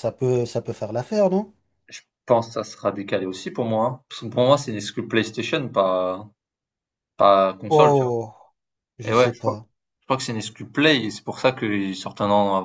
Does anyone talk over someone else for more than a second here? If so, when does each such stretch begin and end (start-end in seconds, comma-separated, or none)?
none